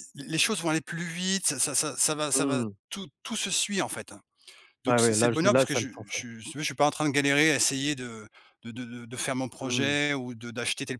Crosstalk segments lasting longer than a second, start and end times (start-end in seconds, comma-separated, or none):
4.9-6.2